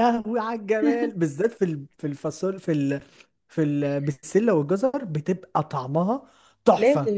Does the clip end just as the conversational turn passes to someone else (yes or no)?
yes